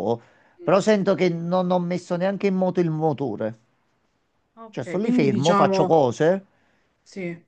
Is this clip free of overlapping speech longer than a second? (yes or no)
no